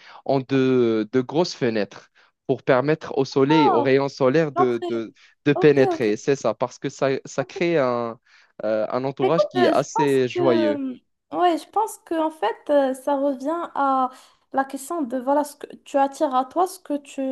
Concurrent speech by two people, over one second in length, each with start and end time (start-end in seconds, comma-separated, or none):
9.2-10.8